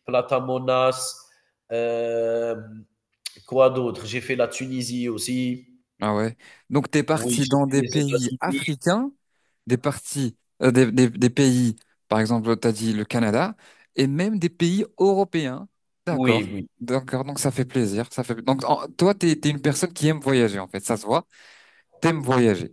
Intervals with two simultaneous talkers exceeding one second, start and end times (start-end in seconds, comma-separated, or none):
7.1-8.6